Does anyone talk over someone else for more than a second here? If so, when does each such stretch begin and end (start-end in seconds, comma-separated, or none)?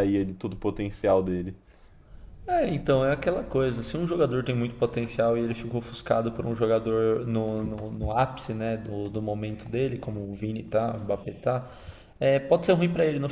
none